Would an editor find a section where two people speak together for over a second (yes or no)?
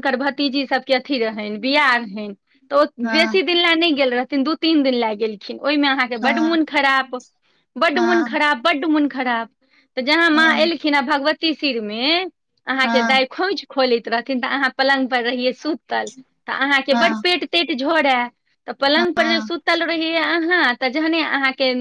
no